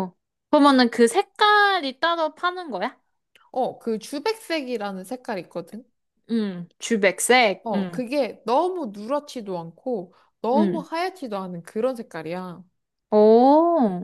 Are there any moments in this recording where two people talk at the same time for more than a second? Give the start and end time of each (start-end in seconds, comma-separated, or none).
none